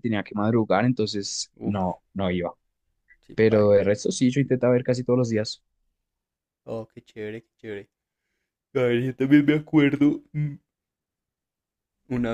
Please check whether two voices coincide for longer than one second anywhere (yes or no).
no